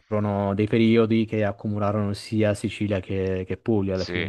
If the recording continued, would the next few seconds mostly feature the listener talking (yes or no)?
yes